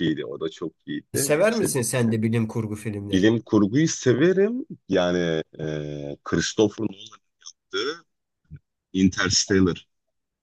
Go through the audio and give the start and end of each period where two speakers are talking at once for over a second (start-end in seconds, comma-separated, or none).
none